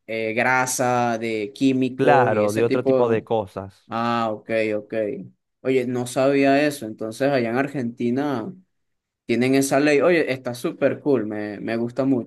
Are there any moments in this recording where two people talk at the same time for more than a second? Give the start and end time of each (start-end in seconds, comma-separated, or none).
1.9-3.3